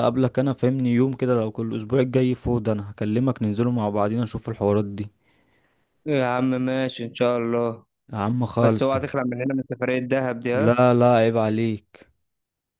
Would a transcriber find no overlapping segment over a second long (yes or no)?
yes